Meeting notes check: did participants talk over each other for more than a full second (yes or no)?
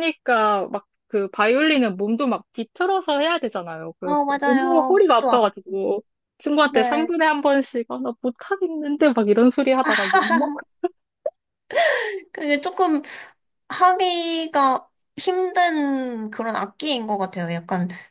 yes